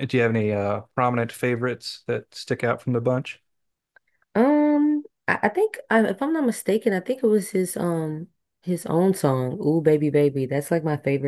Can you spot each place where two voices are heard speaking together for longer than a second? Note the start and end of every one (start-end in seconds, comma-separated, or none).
none